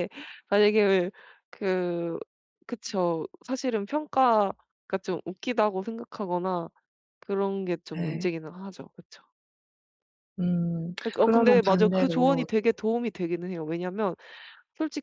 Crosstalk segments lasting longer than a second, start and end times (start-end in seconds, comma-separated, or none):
11.0-12.5